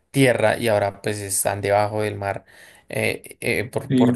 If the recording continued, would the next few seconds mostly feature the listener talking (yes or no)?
no